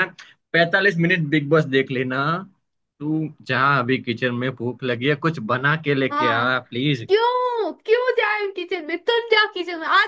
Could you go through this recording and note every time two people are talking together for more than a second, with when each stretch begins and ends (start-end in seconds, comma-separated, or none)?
none